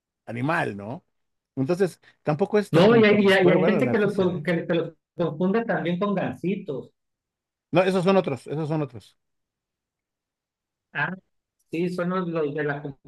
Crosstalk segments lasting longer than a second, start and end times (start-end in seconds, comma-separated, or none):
2.7-4.5